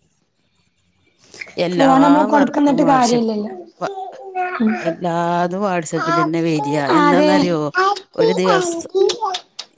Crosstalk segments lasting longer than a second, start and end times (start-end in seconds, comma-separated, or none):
1.8-3.4